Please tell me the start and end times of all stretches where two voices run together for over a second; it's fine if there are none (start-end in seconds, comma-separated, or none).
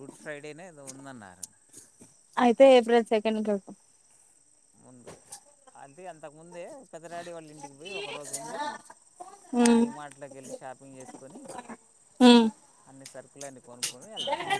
none